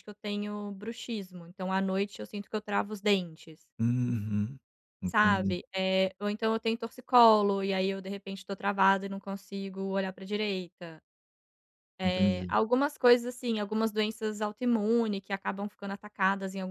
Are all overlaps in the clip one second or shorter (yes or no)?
yes